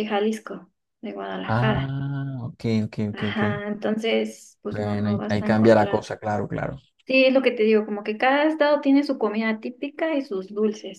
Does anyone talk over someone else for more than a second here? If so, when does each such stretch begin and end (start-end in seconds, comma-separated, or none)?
4.7-6.1